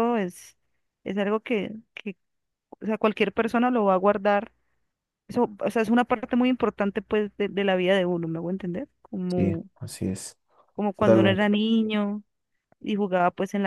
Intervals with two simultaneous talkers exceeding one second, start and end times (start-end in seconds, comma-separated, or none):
none